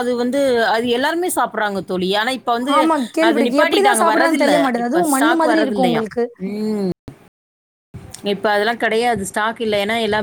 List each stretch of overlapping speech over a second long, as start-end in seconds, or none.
3.3-6.0